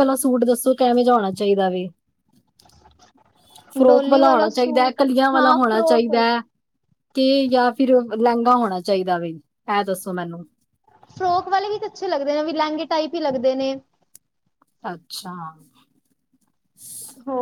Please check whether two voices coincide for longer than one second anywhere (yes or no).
yes